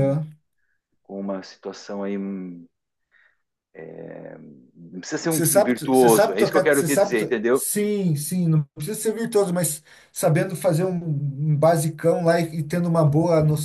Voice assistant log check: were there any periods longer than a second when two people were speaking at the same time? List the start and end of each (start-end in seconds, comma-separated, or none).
5.3-7.7